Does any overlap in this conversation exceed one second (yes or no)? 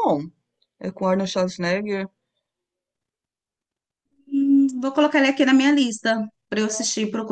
no